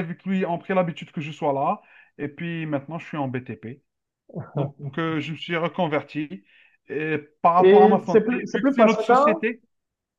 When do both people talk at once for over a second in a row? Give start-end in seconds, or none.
7.6-9.5